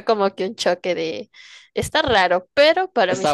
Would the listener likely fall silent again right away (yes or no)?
yes